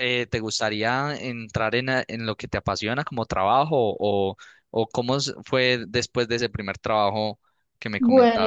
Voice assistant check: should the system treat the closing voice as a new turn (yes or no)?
yes